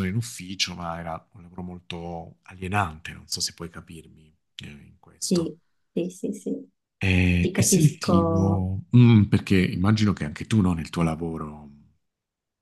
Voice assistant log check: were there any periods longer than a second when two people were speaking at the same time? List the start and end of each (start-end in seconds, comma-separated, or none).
7.4-8.7